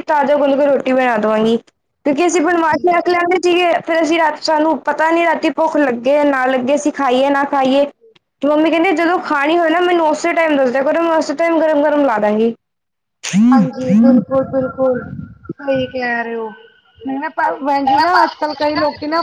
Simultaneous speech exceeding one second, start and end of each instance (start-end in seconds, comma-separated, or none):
none